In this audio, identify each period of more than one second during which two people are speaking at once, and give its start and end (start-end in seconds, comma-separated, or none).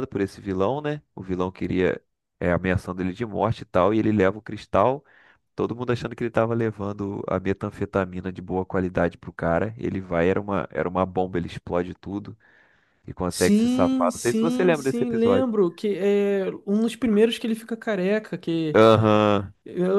13.3-15.5